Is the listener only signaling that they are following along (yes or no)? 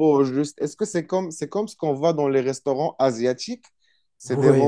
yes